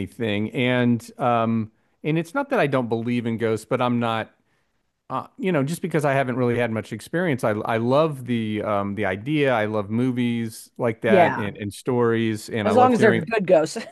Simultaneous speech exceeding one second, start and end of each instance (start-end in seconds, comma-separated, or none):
none